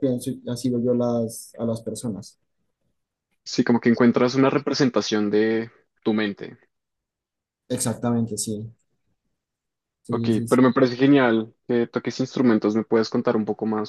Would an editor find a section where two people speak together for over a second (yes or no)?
no